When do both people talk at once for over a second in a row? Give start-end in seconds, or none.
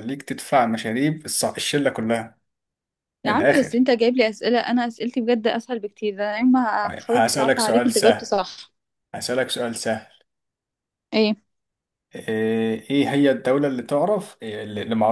7.1-8.3